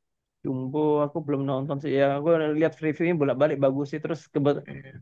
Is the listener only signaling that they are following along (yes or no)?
yes